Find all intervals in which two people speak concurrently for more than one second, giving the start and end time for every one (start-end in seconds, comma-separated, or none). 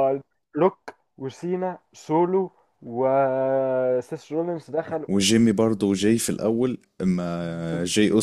none